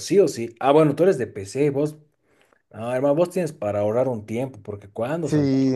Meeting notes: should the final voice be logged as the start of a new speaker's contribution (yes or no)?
yes